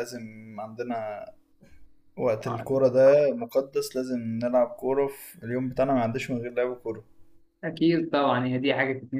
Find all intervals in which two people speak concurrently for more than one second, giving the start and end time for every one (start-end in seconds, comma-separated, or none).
none